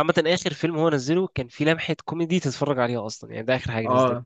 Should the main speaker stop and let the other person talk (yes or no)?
yes